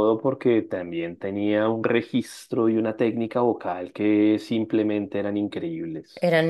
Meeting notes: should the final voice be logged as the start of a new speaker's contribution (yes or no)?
yes